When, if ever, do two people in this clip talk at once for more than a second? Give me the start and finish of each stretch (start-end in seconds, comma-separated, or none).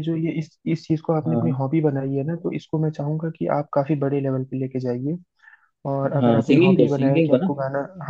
6.2-7.5